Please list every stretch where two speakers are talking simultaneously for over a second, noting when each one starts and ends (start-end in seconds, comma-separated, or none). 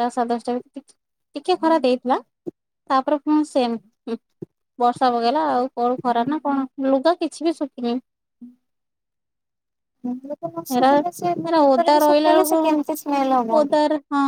11.5-13.5